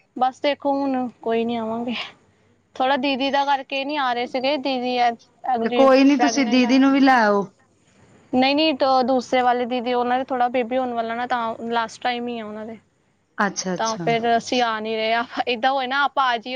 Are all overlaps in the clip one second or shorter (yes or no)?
no